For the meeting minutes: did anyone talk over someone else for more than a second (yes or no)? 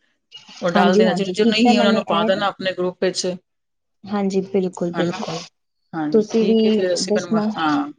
yes